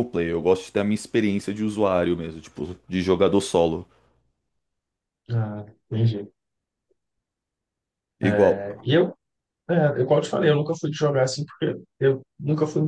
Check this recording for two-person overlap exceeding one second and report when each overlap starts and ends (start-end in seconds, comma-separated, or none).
none